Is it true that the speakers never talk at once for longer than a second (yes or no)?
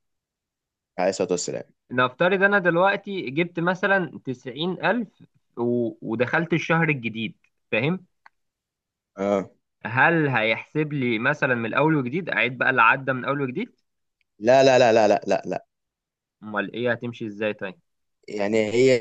yes